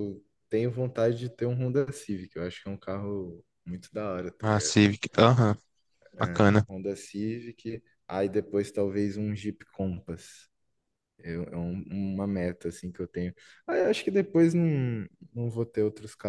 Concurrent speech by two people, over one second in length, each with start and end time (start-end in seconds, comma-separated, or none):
none